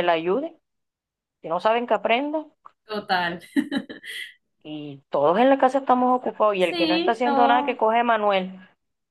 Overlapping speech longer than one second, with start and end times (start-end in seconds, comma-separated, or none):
6.6-7.8